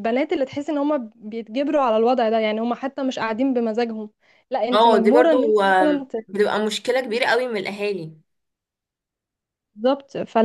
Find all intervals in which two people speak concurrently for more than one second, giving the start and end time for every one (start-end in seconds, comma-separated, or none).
4.7-6.1